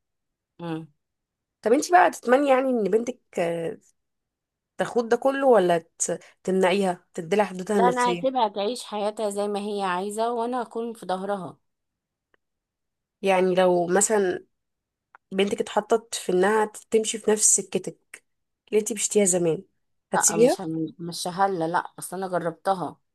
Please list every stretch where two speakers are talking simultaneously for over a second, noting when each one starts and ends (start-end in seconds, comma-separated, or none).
none